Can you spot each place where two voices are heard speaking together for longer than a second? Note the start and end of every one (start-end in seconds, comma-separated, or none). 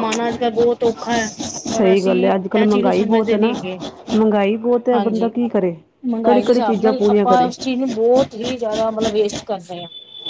1.7-3.5, 6.2-7.5